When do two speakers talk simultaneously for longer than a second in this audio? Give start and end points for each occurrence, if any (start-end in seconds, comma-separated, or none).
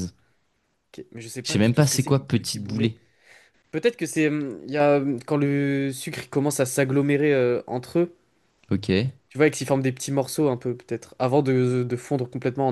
1.4-2.9